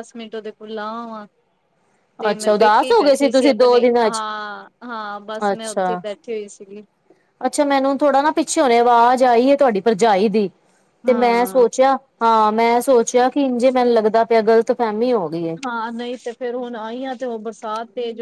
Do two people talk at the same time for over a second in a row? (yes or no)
yes